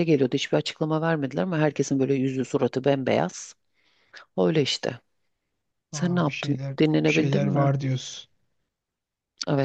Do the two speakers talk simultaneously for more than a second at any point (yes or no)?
yes